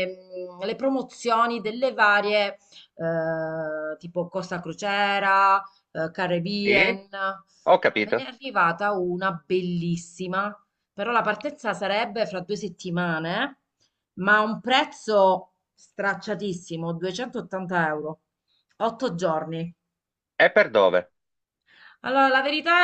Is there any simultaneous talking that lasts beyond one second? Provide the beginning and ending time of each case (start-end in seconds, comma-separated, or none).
none